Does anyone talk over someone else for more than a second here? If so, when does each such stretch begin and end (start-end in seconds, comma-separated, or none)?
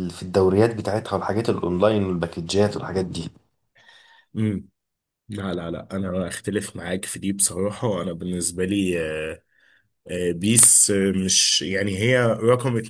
none